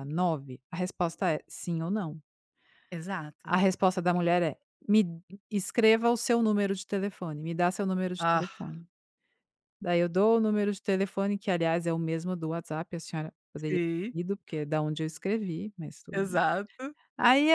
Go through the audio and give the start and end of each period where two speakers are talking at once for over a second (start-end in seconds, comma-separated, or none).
none